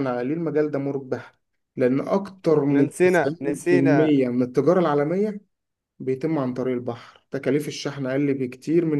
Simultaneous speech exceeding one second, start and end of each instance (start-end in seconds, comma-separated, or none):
2.7-4.2